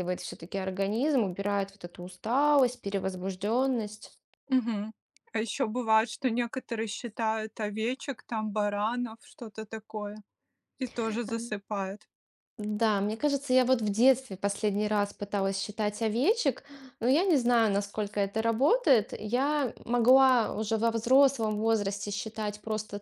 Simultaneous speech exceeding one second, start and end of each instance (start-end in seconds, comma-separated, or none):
none